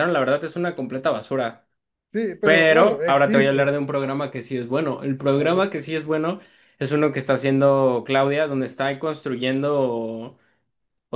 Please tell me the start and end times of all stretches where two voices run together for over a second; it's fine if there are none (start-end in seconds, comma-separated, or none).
2.4-3.8